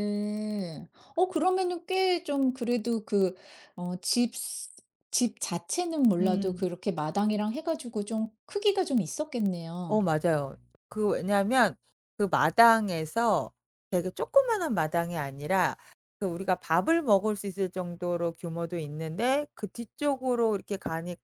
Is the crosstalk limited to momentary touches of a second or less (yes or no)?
yes